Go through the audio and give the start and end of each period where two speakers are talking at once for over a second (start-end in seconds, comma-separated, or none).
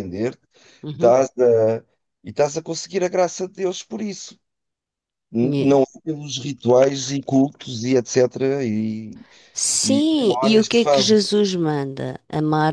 9.8-11.2